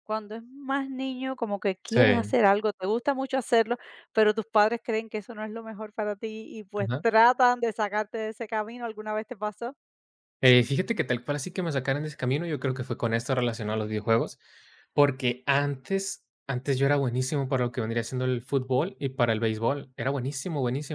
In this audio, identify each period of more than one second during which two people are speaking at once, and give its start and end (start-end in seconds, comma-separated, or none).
none